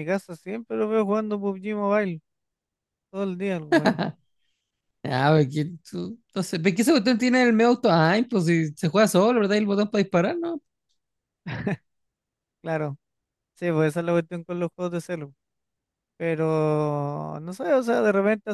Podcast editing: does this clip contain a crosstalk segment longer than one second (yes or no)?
no